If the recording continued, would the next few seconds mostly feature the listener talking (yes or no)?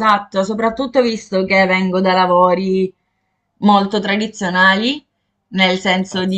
no